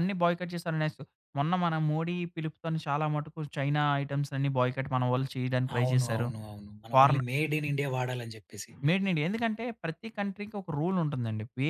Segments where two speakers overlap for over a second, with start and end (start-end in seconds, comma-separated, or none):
none